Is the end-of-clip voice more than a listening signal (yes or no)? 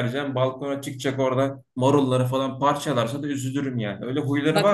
yes